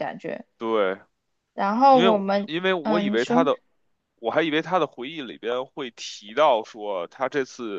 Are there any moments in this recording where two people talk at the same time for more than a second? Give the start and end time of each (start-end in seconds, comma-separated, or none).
1.9-3.4